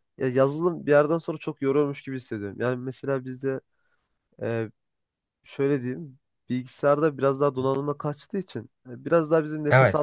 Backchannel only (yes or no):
yes